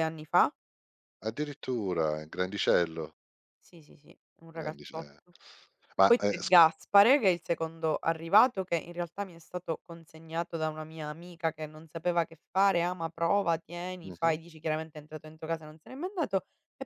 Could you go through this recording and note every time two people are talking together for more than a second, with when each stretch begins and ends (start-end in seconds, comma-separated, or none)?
none